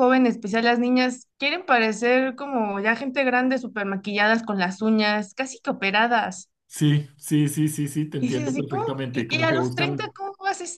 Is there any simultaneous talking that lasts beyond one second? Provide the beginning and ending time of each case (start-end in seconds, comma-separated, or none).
8.2-10.1